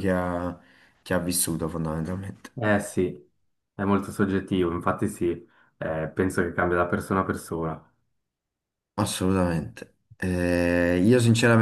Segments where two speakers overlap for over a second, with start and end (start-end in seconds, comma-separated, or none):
none